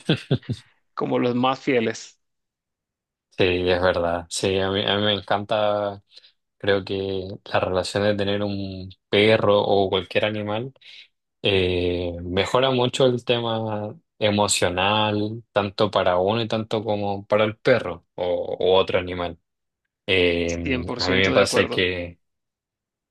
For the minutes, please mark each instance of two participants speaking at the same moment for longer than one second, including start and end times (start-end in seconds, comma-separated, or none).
20.6-21.9